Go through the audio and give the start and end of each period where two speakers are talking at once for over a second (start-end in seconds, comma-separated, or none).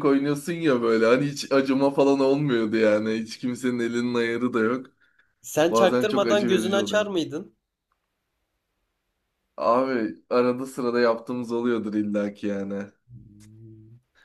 5.7-7.1